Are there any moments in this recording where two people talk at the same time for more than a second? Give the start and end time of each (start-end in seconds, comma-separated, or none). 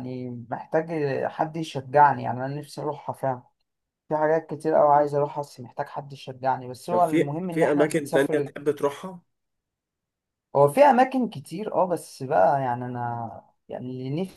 6.9-8.5